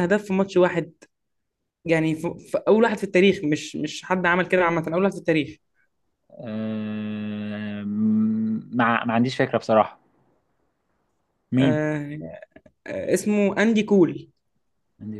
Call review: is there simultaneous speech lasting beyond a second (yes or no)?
no